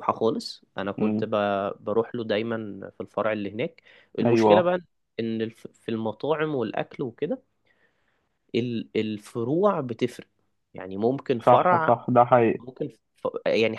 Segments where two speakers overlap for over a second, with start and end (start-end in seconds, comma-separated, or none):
none